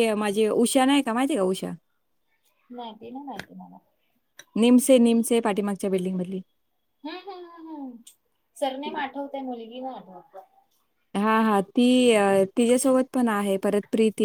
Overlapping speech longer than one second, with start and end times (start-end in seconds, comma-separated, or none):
none